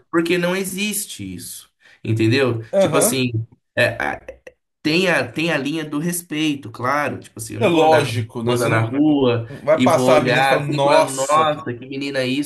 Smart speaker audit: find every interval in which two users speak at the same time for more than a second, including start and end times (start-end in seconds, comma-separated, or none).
7.6-8.9, 9.6-11.6